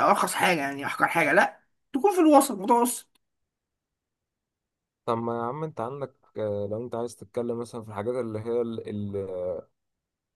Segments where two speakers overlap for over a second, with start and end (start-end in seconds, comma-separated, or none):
none